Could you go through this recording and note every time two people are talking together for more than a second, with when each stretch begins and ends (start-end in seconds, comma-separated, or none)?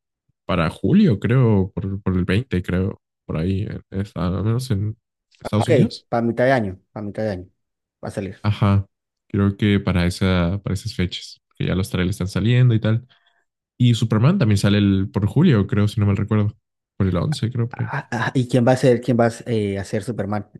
none